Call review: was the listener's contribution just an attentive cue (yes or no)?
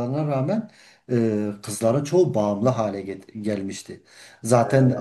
yes